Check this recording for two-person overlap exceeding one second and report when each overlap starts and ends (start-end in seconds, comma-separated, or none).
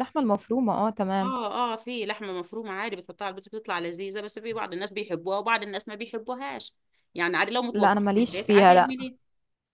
7.7-8.9